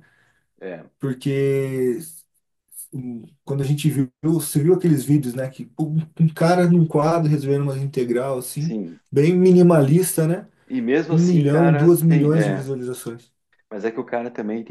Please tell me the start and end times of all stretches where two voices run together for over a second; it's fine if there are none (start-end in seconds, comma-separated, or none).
11.1-12.7